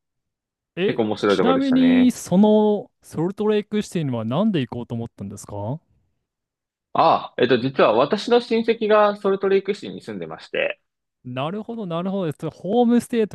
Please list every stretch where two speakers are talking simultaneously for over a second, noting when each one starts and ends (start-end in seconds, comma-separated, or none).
0.8-2.1